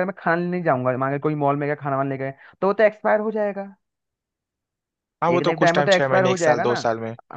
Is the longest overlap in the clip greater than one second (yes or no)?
yes